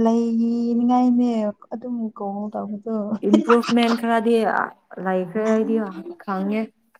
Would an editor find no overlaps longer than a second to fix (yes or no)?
yes